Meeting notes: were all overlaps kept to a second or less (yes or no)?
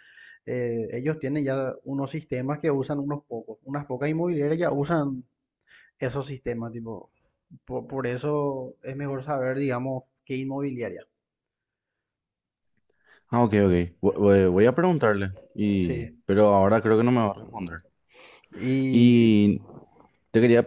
yes